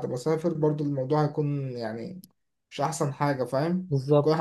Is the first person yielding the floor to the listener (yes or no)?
yes